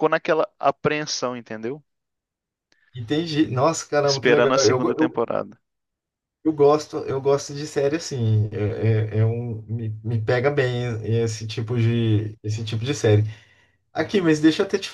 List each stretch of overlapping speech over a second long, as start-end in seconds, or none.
4.0-5.2